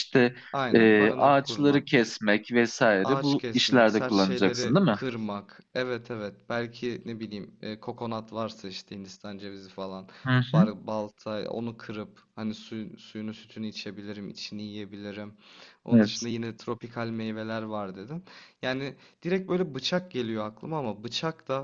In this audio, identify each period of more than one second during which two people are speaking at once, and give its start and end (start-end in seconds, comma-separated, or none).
0.7-2.1, 3.0-5.0